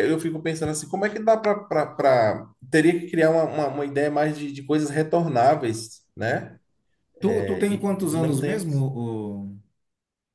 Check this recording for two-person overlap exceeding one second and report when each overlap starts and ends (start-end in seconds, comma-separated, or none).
7.2-8.8